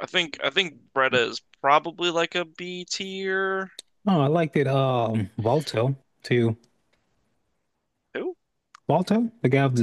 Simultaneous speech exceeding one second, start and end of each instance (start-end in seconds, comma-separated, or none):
none